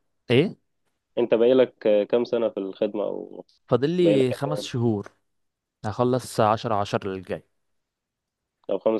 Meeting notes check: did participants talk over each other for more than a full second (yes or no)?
no